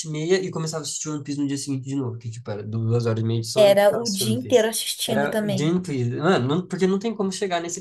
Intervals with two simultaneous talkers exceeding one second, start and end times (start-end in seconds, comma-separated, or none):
3.5-5.8